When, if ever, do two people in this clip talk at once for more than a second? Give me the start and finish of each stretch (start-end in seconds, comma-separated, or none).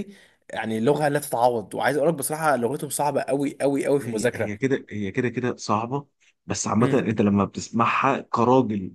none